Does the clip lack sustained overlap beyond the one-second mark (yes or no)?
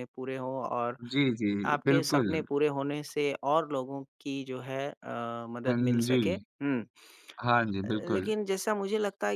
yes